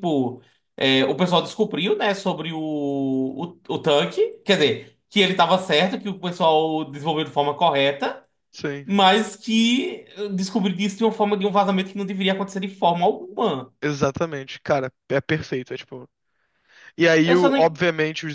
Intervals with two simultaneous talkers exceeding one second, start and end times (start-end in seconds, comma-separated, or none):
none